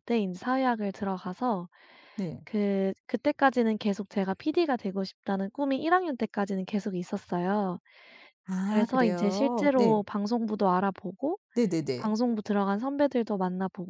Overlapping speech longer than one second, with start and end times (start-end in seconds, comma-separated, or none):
8.7-10.1